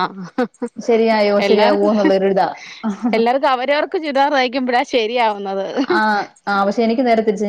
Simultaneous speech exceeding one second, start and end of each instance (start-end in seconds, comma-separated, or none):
none